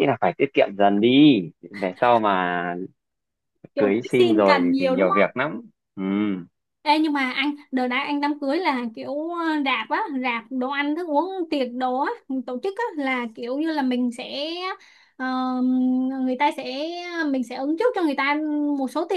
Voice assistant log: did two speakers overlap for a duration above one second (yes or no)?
yes